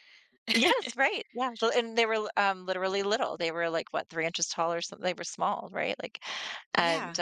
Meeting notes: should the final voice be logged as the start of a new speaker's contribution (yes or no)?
no